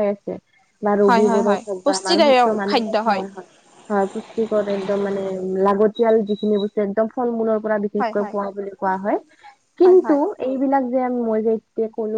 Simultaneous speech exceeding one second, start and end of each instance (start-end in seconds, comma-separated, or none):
1.1-3.0